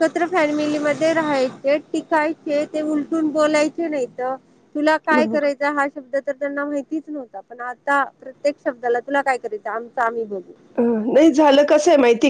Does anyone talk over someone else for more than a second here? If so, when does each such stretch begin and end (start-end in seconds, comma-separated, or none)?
none